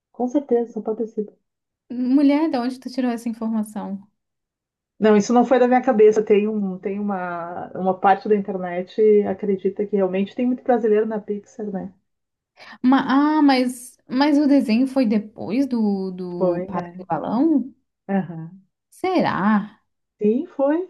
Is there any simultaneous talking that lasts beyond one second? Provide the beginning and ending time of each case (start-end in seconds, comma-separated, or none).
none